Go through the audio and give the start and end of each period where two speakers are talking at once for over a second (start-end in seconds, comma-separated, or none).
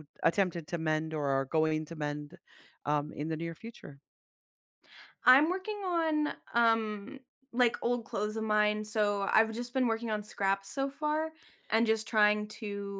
none